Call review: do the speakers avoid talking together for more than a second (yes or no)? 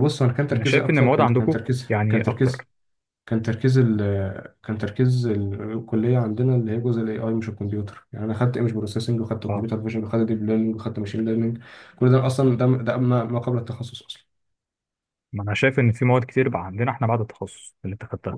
no